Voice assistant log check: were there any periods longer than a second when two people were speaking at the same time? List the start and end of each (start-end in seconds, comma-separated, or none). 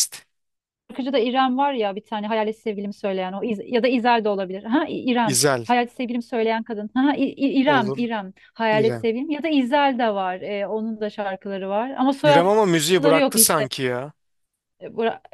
12.2-13.7